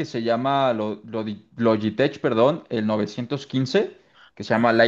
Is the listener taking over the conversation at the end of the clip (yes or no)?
no